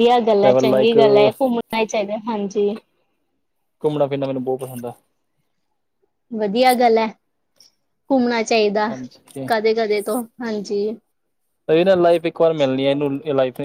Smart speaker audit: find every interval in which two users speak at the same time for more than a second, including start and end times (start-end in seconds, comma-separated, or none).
none